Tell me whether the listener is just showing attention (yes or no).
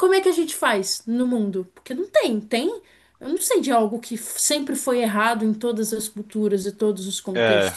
no